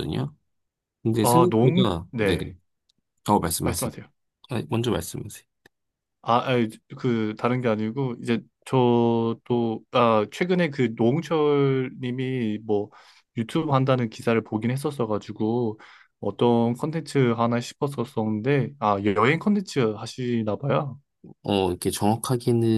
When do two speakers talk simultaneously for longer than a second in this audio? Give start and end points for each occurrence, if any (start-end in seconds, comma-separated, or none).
1.2-2.5